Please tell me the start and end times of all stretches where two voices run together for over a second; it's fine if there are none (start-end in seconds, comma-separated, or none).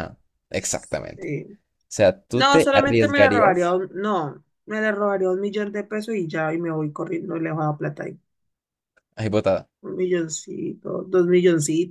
2.3-3.7